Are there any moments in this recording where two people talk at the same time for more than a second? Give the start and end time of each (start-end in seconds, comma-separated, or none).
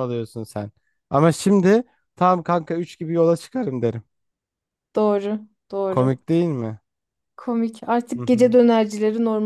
none